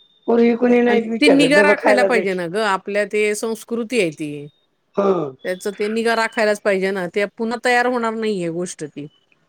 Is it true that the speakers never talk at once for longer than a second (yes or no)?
no